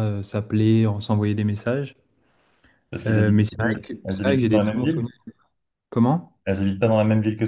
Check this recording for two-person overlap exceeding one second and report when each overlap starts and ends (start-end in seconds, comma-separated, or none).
3.0-5.1